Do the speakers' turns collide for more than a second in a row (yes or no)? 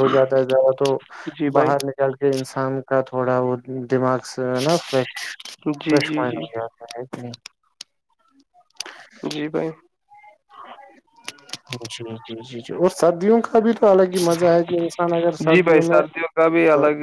no